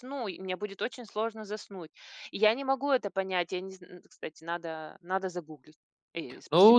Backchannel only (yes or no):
no